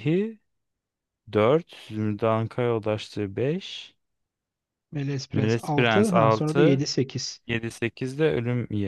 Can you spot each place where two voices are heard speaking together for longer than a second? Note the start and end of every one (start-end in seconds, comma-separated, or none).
5.3-6.8